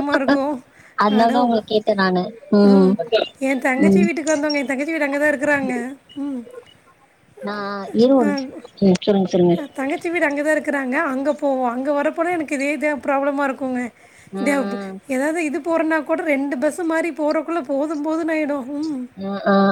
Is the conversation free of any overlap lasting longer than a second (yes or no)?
yes